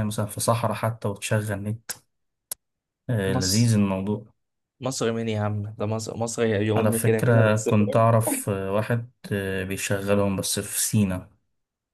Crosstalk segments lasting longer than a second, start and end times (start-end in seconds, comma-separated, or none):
6.8-8.1